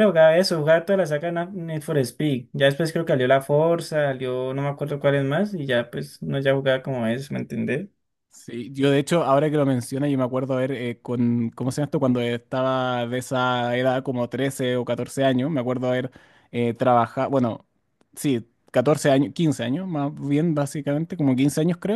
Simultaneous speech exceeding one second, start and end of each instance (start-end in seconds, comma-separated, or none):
none